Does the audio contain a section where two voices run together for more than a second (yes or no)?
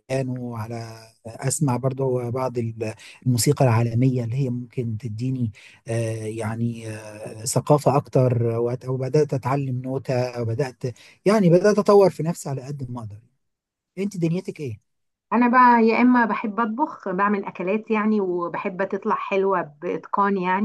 no